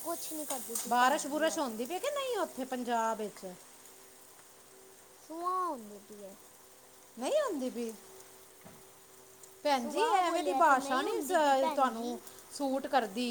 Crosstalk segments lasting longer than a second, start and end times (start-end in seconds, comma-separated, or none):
9.8-12.2